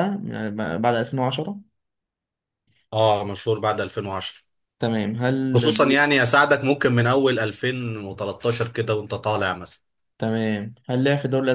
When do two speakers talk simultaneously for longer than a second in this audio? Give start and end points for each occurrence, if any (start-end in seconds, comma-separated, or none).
none